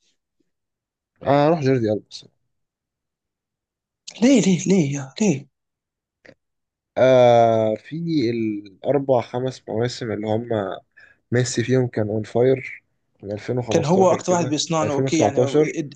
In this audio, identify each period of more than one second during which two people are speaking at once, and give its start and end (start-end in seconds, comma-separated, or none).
13.7-15.4